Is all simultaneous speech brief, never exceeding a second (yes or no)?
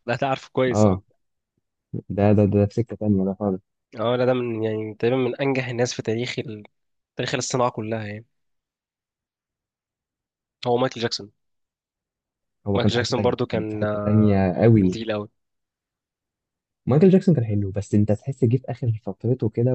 no